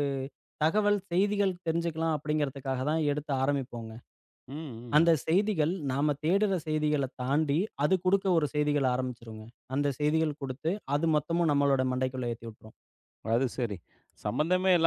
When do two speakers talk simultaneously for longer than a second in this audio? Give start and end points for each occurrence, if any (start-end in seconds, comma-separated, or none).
none